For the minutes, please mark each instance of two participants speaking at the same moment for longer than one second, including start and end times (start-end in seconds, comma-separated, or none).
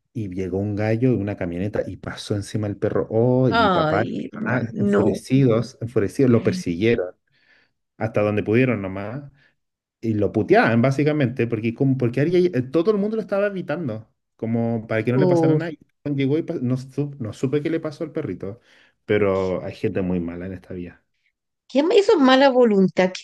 3.5-5.2